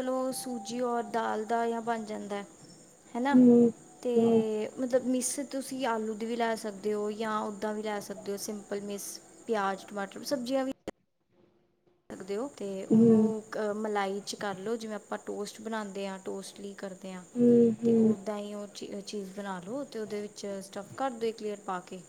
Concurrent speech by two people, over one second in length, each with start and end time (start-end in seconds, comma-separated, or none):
none